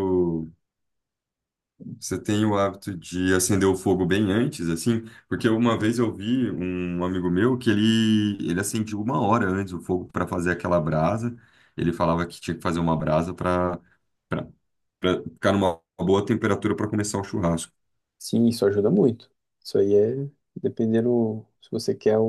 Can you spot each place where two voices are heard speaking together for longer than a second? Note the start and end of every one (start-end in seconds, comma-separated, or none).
none